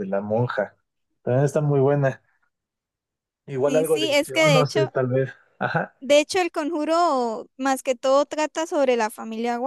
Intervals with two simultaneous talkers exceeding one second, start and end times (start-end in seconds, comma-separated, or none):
3.7-4.9